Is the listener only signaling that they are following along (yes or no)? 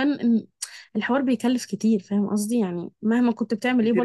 no